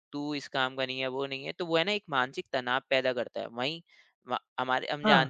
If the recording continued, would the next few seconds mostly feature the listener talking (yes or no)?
no